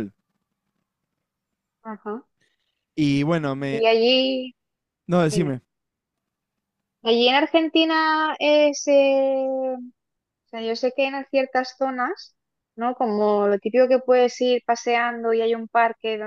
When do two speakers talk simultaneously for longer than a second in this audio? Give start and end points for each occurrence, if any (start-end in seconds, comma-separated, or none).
none